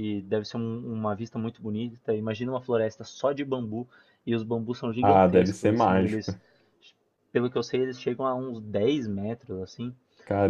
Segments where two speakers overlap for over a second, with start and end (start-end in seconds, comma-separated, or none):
5.0-6.3